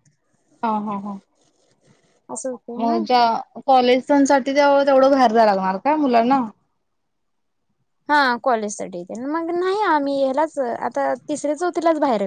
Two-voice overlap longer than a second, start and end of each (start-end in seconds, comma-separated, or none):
none